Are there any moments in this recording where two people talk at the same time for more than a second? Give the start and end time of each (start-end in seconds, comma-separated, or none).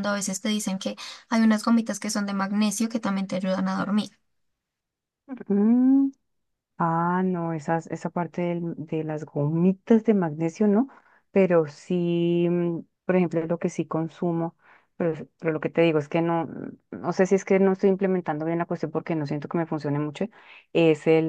none